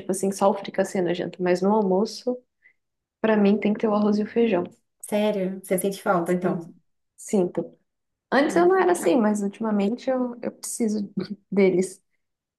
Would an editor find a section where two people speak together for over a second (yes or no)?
no